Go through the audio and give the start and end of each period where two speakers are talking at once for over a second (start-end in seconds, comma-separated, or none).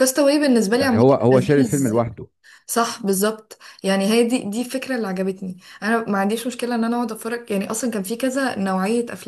0.8-2.0